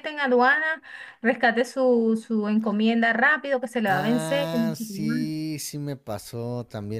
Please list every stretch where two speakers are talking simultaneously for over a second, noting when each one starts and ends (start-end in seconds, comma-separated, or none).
3.9-5.3